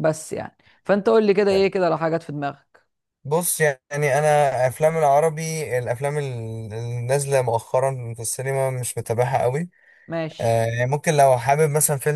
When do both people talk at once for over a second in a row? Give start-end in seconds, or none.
none